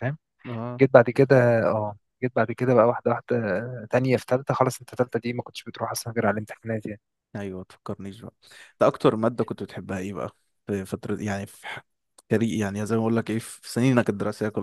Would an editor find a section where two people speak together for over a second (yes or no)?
no